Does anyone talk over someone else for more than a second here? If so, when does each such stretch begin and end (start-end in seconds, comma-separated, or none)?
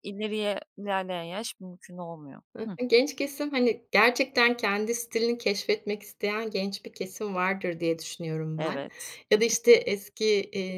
none